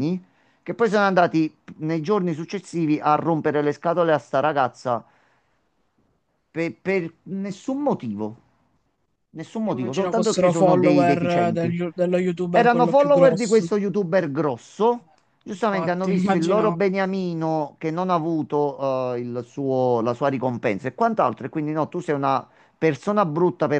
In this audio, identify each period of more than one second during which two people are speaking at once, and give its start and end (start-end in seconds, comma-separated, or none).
9.6-11.8, 12.5-13.7, 15.5-16.8